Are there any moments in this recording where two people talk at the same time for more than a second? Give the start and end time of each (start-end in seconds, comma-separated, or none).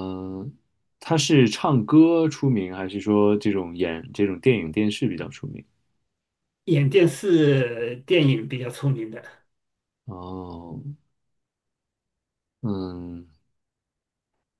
none